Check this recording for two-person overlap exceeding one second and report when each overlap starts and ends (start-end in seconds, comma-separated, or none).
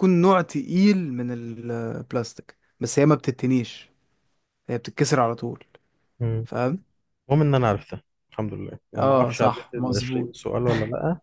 9.0-10.3